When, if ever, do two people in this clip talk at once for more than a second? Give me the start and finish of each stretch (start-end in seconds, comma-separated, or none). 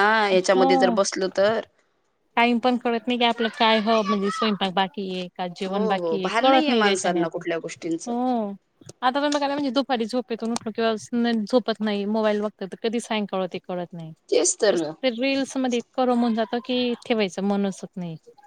5.7-7.4